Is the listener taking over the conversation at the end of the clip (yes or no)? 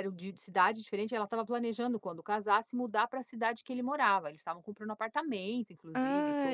yes